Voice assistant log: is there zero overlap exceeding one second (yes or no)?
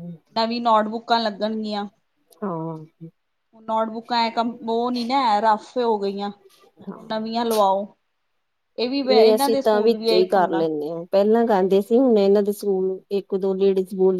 no